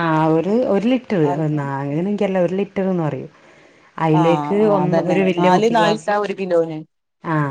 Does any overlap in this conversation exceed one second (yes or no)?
yes